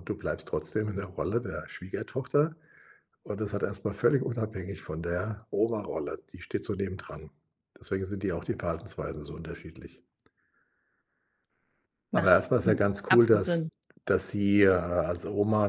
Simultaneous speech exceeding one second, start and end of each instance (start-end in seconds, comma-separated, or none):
12.1-13.7